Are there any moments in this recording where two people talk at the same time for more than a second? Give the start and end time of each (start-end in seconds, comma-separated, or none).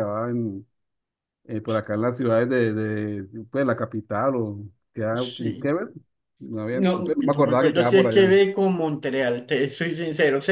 6.7-8.3